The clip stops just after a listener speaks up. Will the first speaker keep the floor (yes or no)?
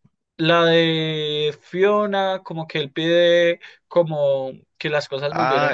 no